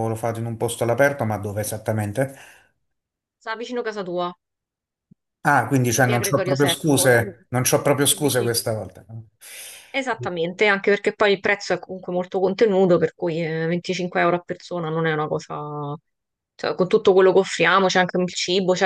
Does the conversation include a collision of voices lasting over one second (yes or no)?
yes